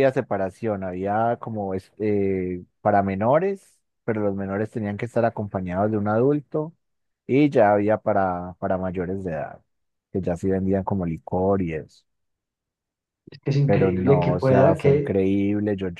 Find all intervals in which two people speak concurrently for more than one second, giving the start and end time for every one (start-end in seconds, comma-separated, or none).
13.6-15.2